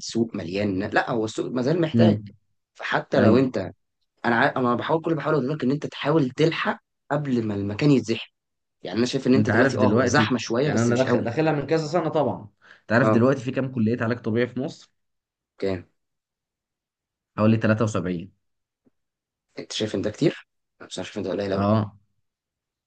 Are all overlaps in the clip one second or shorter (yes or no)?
no